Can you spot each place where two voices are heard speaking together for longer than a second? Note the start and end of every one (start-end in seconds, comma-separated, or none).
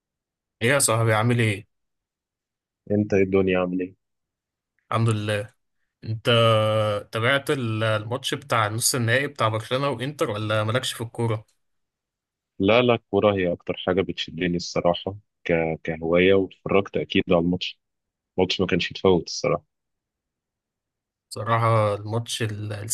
none